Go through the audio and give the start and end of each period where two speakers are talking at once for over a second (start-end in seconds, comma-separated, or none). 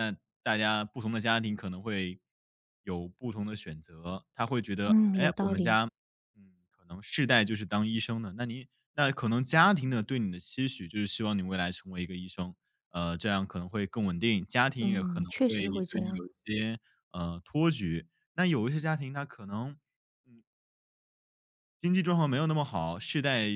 14.8-16.2